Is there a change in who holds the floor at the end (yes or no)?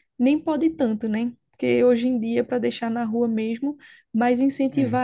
no